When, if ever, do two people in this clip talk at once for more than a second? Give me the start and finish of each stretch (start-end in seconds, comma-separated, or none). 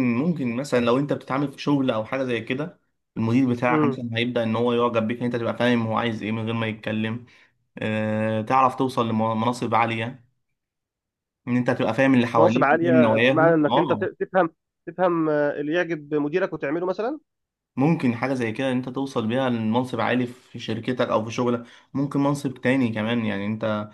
12.4-14.1